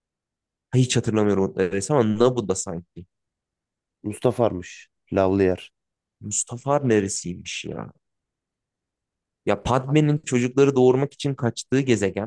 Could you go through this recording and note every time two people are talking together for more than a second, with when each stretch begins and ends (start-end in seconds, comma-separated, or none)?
none